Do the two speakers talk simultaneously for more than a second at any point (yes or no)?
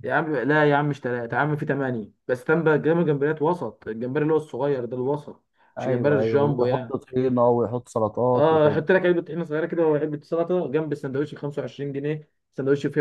yes